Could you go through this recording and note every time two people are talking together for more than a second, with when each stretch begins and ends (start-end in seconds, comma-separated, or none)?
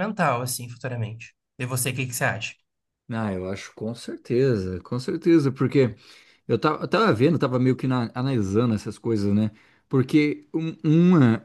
none